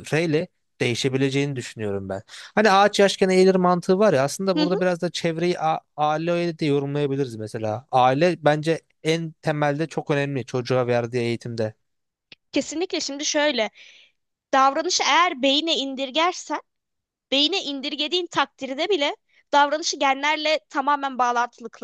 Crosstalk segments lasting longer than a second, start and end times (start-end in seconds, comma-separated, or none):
none